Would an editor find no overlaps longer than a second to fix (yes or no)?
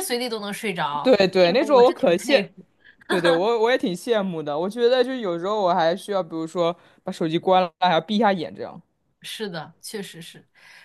no